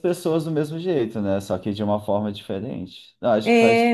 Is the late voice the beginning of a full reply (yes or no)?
yes